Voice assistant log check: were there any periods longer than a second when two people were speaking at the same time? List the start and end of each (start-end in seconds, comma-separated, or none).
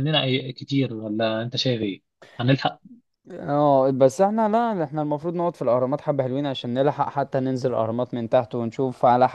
none